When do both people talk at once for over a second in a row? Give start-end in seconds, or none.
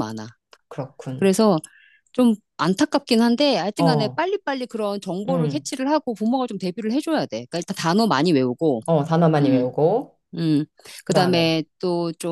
none